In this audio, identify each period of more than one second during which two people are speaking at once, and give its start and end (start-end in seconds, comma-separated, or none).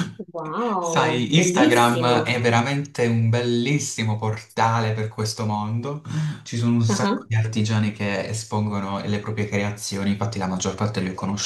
0.8-2.3